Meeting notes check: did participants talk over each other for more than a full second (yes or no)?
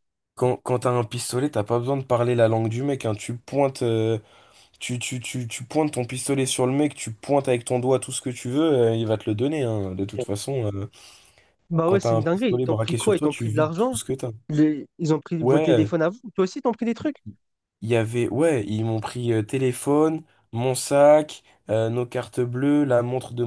yes